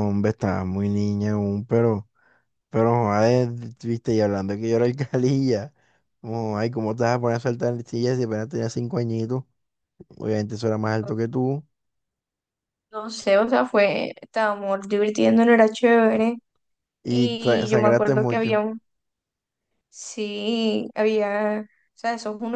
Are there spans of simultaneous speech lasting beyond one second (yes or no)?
yes